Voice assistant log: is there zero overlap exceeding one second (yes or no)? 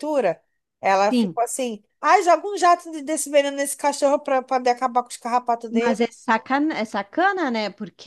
yes